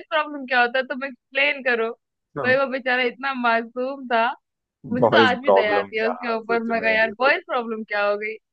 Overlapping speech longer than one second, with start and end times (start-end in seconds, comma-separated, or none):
5.0-7.3